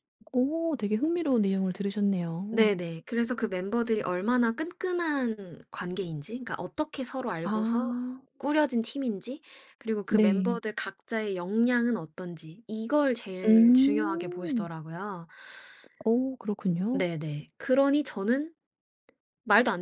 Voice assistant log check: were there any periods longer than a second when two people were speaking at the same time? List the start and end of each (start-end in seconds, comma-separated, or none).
13.4-14.7